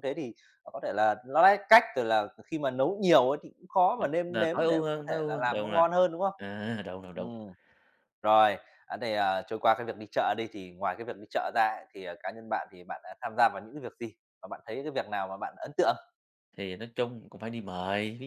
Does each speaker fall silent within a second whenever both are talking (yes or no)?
no